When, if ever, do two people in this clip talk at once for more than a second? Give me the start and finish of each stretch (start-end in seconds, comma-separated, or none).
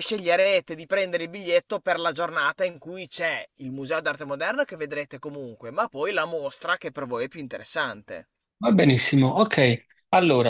none